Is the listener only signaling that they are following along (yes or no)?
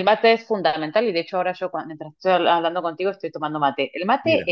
yes